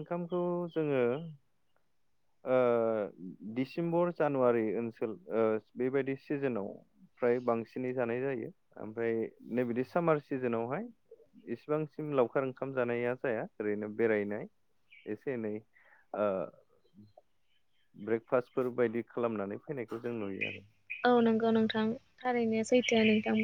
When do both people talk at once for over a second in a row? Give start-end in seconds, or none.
none